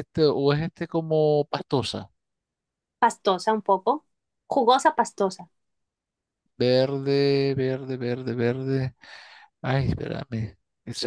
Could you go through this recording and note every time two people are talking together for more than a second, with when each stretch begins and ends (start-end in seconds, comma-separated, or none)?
none